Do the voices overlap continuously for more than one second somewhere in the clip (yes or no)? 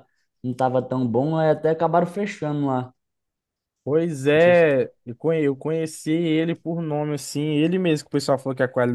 no